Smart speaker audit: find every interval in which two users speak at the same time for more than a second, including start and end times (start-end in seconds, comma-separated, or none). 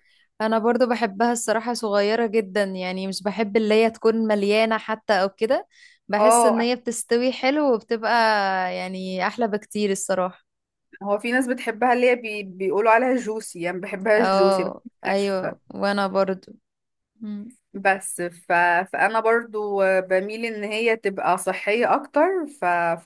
14.2-15.7